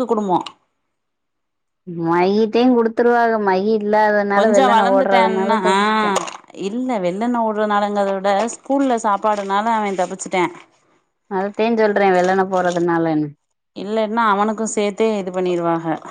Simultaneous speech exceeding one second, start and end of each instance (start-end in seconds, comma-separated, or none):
4.4-5.7